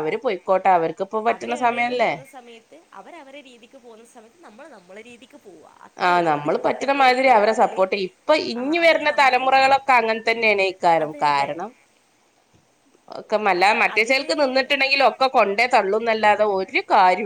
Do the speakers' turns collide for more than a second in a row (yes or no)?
no